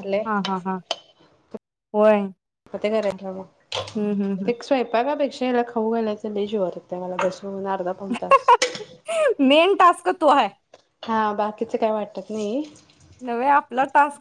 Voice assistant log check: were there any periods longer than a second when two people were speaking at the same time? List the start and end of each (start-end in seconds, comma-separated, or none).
none